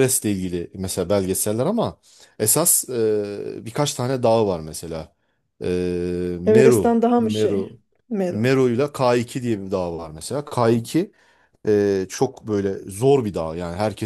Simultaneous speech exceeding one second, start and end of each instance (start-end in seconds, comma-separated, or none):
6.5-7.7